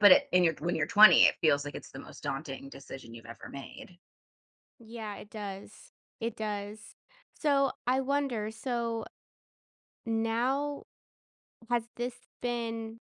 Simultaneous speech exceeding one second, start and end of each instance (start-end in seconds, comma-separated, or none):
none